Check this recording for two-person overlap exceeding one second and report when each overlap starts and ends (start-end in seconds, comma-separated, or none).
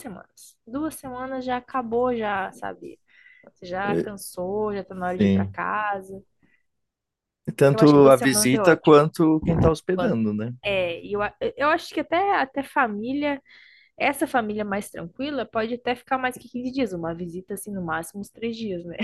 7.6-9.0